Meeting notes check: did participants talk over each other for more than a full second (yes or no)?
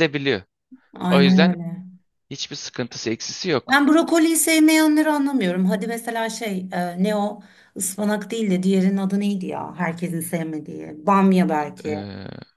no